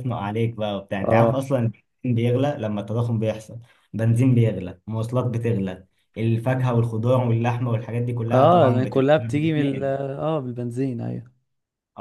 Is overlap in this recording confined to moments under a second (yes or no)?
no